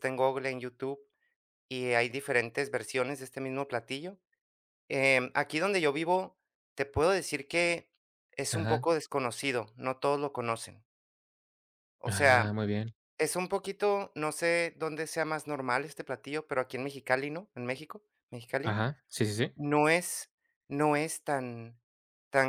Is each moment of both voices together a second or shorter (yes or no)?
yes